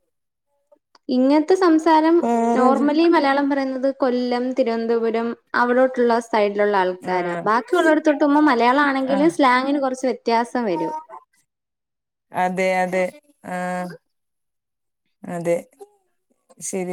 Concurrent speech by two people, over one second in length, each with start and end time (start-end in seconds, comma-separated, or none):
none